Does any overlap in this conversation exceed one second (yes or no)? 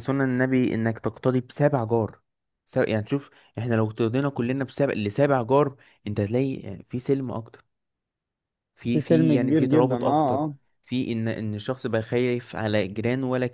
yes